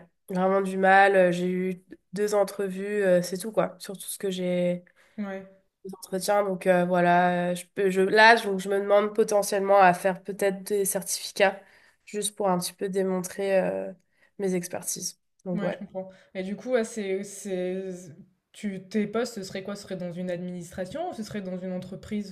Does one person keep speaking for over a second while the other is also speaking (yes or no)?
no